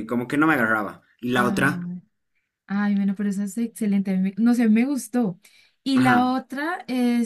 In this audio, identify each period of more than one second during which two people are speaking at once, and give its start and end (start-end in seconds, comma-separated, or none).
none